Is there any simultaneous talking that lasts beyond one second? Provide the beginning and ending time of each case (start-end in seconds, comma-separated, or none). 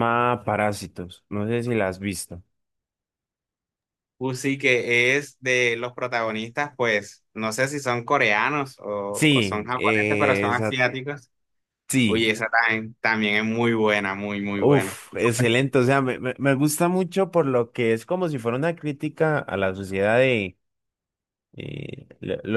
9.1-10.8